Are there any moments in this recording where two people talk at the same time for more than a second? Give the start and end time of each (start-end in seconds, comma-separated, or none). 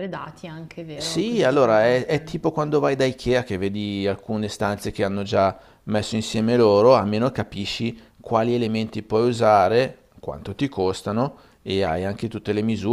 0.9-2.3